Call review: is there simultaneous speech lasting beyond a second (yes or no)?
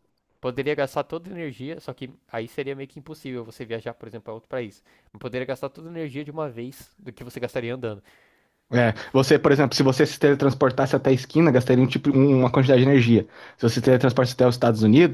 no